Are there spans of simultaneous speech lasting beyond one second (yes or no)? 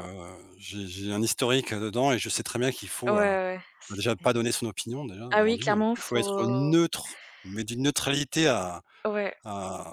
yes